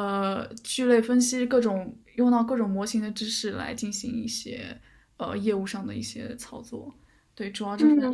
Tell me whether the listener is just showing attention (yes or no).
no